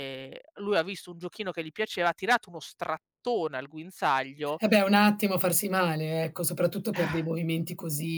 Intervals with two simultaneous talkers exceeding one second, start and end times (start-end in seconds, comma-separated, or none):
none